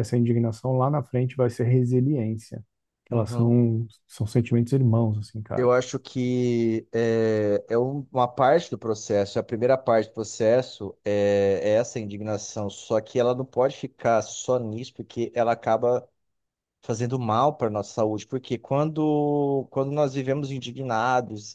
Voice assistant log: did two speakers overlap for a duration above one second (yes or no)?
no